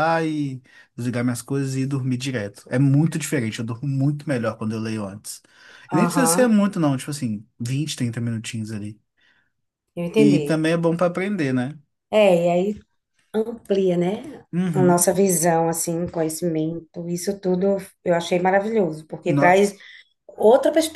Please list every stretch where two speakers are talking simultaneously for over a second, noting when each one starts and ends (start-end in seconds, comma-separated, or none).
none